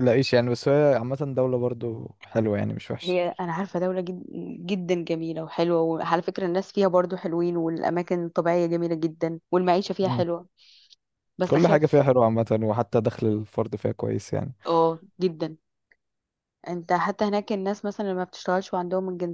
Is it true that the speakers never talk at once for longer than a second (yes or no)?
yes